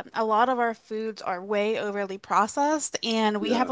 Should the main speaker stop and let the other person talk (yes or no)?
no